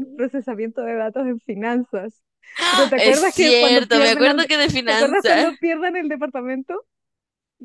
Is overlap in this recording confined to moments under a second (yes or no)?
no